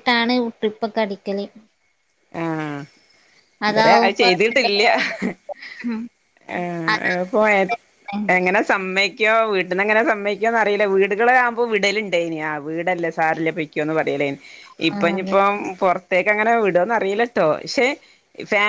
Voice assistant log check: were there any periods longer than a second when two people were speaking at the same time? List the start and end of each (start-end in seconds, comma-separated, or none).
none